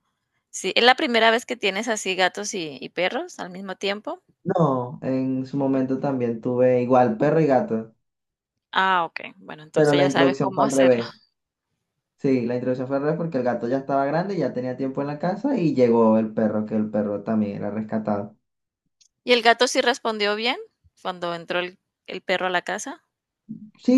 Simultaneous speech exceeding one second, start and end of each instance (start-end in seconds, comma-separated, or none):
9.7-11.0